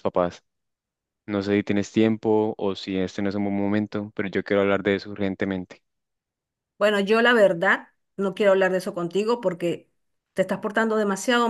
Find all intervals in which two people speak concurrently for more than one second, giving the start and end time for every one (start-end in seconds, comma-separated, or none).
none